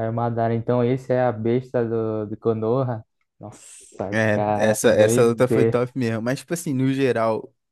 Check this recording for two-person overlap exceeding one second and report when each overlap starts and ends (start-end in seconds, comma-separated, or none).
4.1-5.8